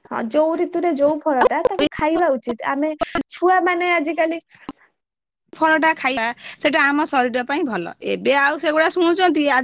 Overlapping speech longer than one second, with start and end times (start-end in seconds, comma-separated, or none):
none